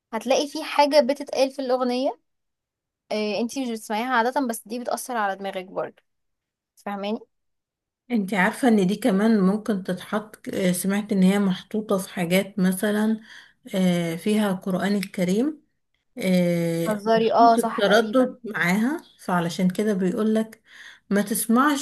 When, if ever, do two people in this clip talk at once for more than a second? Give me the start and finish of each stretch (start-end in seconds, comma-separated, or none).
16.9-18.4